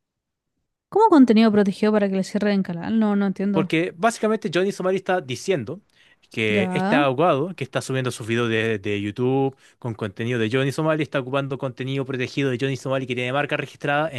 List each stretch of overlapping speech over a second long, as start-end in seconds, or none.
none